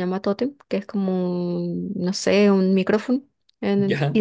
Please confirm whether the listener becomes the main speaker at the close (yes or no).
no